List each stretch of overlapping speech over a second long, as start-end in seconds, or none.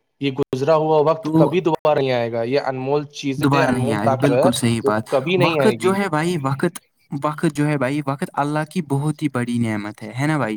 none